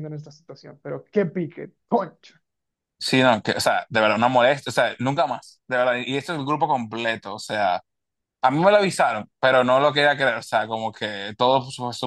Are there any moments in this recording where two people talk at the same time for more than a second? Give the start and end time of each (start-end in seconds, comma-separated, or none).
none